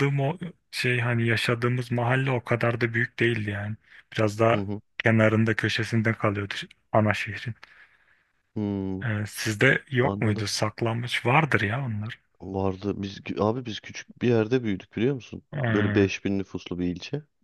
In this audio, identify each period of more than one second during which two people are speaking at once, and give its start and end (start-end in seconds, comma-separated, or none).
none